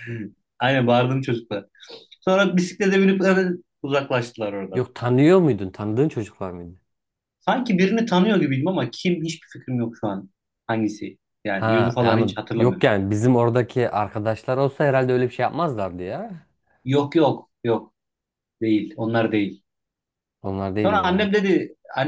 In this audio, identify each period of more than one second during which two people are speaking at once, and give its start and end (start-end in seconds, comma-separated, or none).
11.6-13.0